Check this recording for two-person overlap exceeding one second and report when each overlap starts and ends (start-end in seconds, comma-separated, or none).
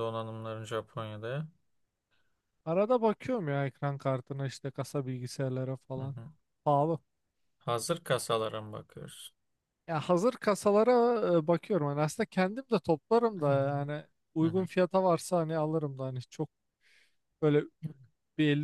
none